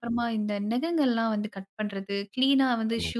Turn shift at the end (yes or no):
no